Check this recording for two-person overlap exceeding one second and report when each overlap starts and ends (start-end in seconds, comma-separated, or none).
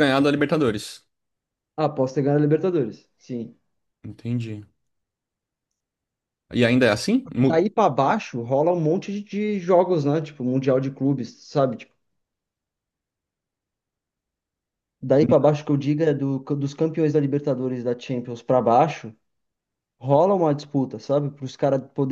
none